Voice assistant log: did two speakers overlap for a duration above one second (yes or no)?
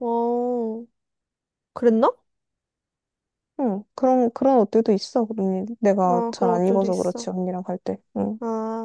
yes